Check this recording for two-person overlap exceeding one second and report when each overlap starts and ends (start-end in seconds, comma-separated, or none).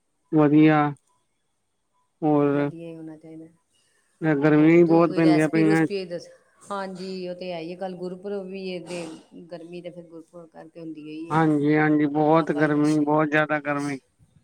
4.6-5.8